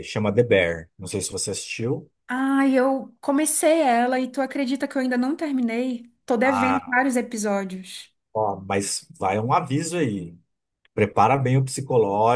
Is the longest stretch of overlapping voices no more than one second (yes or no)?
yes